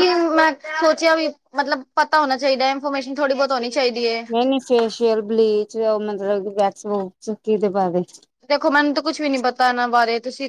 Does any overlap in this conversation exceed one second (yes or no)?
no